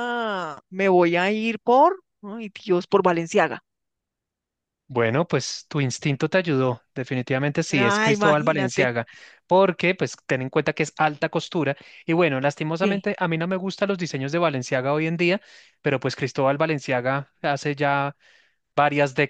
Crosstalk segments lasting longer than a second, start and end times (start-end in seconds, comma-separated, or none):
7.7-8.9